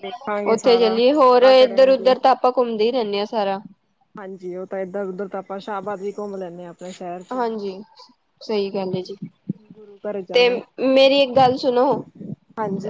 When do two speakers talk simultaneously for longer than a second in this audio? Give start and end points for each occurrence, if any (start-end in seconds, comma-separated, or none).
0.5-2.1